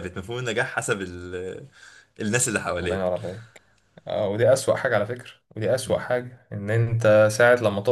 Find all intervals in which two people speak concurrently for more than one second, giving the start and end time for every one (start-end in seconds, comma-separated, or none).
none